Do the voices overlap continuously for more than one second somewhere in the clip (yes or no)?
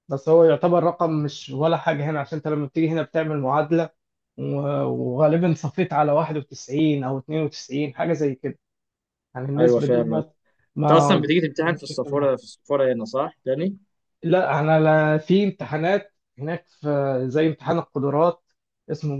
yes